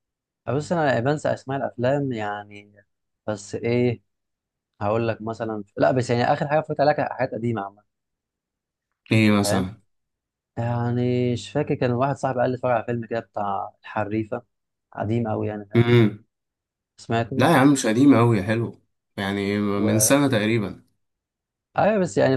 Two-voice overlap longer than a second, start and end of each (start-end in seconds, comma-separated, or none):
none